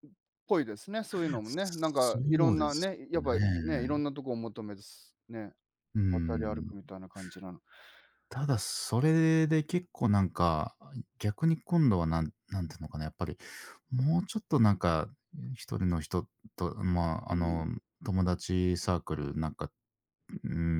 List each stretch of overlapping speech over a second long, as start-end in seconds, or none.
1.4-4.0